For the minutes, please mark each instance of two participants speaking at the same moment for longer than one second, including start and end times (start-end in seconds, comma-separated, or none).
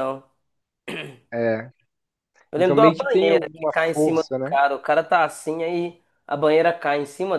2.6-4.6